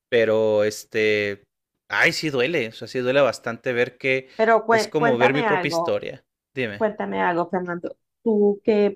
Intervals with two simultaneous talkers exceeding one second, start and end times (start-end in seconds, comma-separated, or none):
4.7-6.0